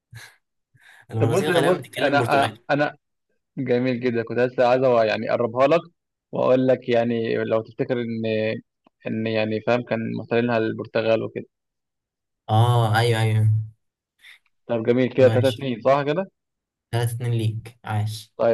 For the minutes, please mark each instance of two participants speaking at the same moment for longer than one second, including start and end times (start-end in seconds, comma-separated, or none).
1.2-2.6